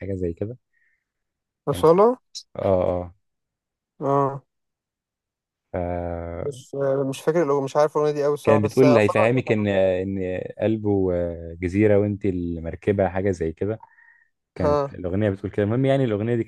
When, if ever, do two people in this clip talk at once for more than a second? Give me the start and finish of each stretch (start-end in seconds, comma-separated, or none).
8.4-9.7